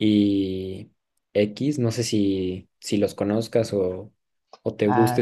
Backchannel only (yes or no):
no